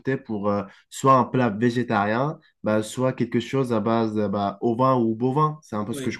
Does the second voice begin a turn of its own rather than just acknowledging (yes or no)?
yes